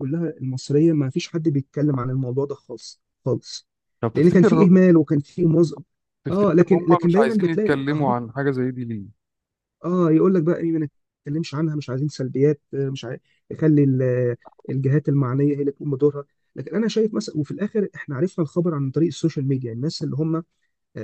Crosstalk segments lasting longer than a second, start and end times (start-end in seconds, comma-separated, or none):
6.3-8.1